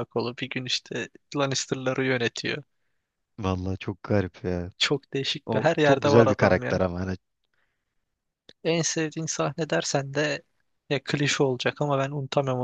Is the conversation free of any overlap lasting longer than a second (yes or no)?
no